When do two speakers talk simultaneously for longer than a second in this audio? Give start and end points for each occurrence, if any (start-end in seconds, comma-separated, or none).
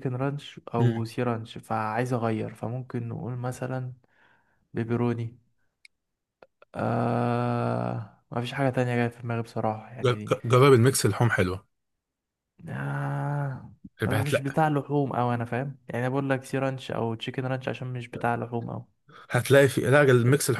none